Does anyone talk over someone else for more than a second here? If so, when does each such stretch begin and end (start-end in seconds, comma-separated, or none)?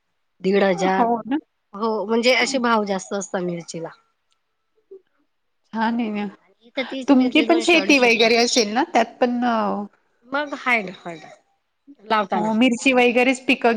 7.1-8.3